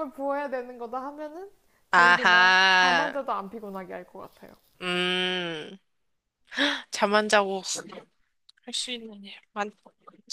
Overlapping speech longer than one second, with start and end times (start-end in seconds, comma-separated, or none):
1.9-3.1